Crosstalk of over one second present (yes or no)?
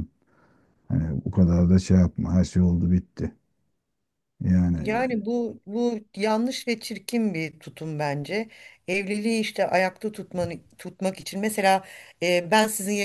no